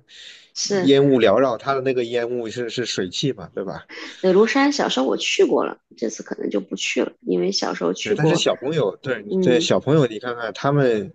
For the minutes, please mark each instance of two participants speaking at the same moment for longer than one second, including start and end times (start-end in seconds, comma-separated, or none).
none